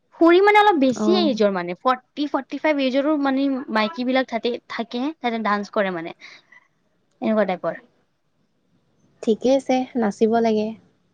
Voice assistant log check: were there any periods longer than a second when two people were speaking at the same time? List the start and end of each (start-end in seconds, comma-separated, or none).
none